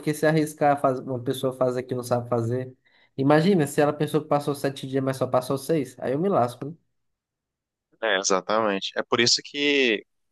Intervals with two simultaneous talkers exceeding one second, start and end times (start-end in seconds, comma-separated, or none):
none